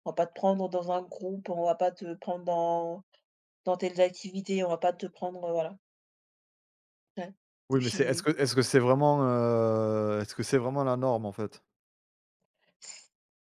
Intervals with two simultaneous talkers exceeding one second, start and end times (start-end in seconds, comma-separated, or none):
none